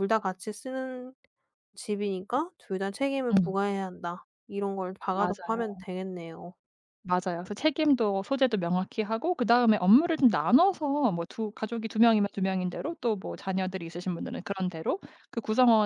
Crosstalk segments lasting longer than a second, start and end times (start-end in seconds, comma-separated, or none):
none